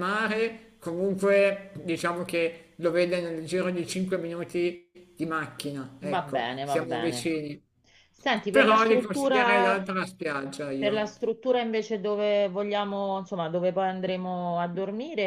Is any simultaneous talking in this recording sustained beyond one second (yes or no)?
yes